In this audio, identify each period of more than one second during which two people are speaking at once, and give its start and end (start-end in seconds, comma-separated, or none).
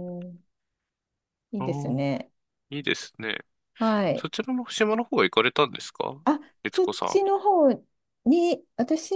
none